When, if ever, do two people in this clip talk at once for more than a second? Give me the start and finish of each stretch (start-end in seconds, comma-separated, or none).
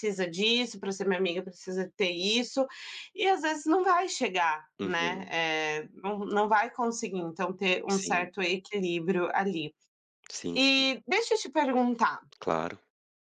none